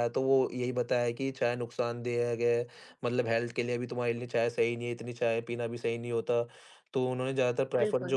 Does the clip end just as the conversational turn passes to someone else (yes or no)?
no